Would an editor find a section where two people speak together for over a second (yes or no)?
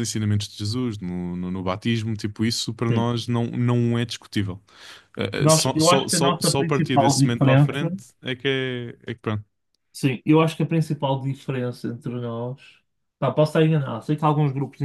yes